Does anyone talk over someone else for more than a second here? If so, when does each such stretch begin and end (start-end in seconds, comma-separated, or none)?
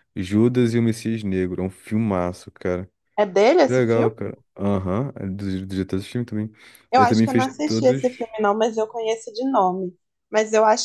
7.0-8.2